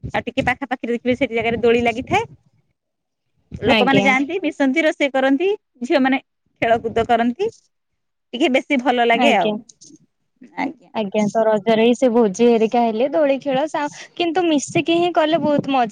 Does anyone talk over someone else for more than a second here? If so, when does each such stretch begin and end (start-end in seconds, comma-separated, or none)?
none